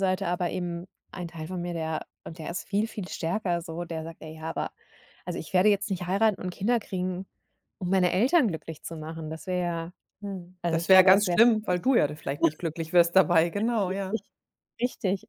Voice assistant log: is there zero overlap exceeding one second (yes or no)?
no